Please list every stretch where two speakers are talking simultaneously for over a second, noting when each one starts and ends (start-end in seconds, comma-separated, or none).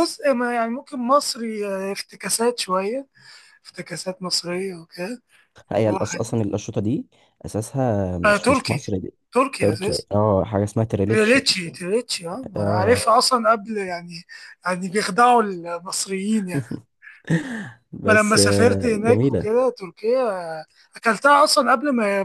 18.1-19.5